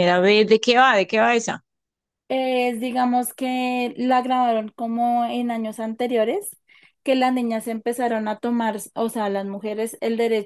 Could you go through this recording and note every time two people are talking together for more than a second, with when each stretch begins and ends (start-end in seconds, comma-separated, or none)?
none